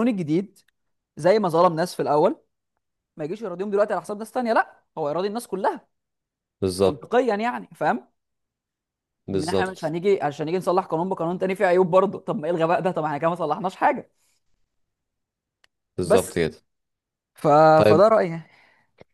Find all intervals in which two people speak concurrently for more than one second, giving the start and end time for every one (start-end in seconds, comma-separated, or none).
none